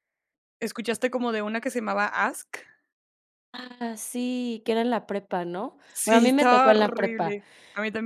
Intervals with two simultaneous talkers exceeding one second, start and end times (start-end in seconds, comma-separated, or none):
5.9-7.4